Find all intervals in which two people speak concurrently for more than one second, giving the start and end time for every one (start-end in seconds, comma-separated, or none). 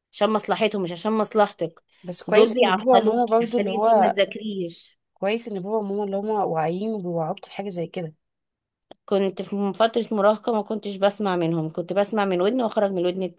2.2-4.2